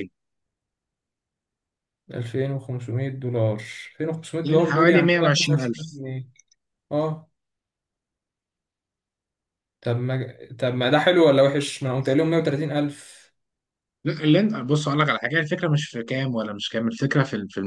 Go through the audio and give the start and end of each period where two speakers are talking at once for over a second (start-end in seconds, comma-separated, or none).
4.4-6.0